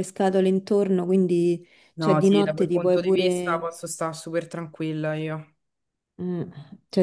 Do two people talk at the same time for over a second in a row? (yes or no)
yes